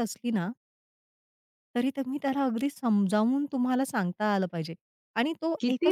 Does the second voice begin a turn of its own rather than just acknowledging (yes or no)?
yes